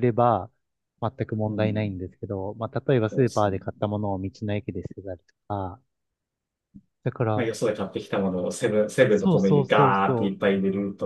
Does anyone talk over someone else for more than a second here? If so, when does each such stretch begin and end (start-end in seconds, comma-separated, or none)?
9.1-10.3